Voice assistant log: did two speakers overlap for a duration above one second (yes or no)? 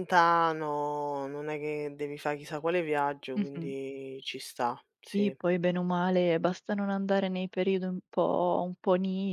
no